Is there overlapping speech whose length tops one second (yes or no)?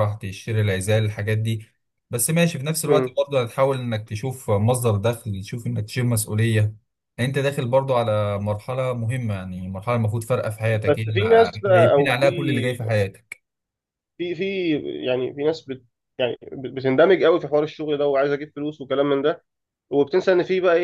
yes